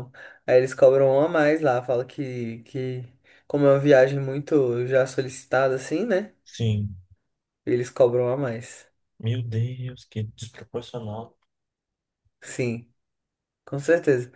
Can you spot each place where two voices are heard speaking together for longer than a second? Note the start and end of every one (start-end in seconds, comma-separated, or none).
none